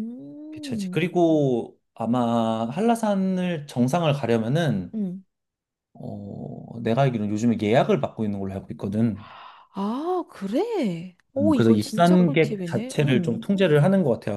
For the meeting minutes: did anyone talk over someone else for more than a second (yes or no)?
yes